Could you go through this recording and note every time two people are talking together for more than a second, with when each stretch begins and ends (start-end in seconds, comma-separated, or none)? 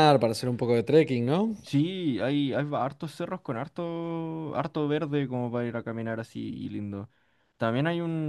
none